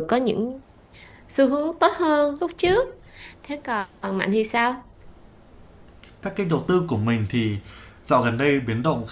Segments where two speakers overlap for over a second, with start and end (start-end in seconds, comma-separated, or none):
none